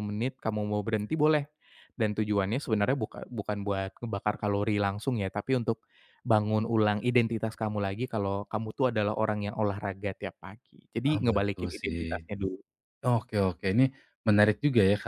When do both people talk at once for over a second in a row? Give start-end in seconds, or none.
11.1-12.3